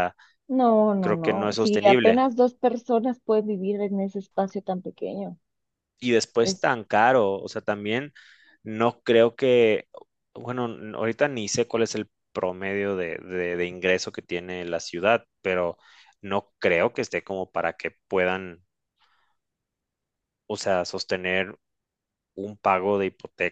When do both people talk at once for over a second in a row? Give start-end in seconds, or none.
1.0-2.2